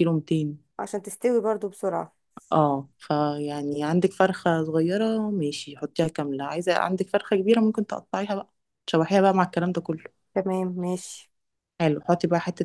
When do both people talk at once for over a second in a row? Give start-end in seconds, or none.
none